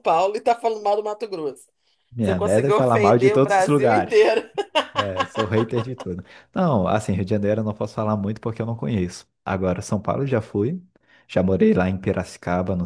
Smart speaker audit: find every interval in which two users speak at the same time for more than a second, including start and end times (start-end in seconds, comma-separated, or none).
2.2-4.2